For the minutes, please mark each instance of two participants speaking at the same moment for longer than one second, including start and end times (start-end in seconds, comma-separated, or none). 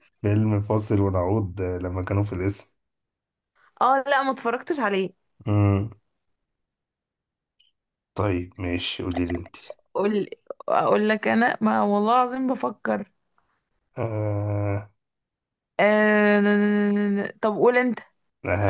none